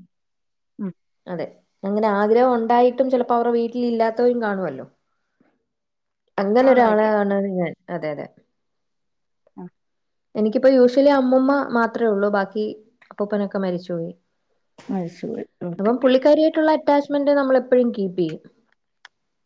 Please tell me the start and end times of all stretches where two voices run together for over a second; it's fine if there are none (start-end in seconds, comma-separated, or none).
none